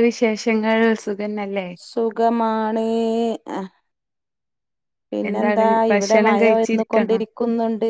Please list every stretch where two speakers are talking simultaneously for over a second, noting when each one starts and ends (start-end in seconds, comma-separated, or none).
5.3-7.2